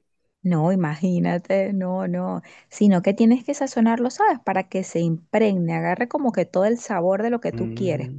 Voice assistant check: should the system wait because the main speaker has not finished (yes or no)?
no